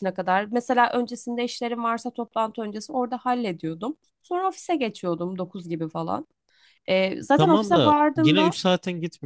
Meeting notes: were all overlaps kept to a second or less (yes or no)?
no